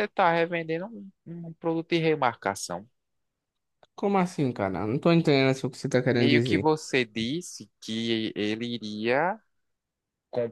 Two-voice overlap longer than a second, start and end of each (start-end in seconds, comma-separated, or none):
none